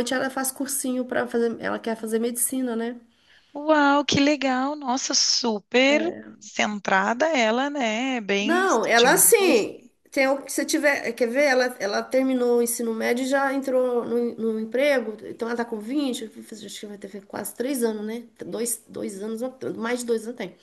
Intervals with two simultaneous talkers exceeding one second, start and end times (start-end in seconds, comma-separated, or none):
8.4-9.7